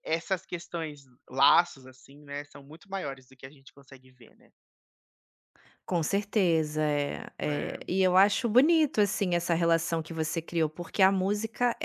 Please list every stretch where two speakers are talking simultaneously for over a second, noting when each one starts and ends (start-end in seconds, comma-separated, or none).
none